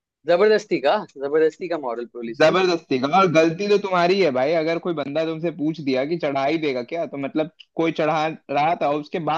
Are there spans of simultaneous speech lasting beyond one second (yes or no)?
no